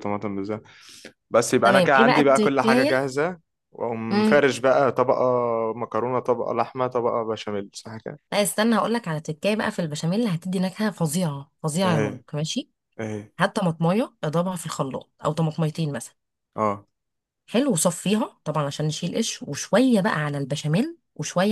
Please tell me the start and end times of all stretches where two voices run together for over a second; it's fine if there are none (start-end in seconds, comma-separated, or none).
1.6-3.1